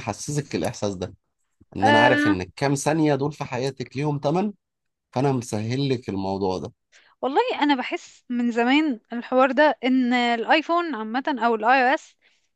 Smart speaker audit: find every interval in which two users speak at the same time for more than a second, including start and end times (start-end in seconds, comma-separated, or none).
none